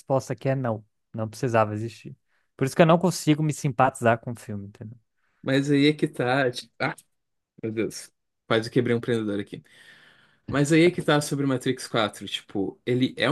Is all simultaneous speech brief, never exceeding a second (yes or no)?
yes